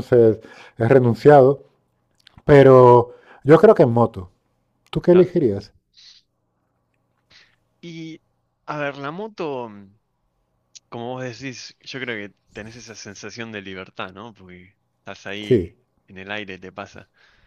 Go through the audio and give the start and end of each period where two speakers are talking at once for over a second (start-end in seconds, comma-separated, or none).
none